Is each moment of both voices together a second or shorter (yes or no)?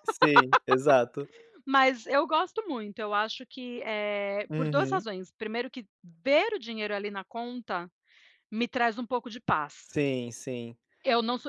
yes